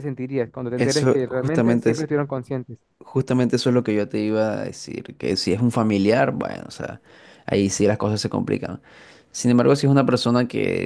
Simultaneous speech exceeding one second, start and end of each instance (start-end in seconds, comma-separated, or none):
0.8-2.1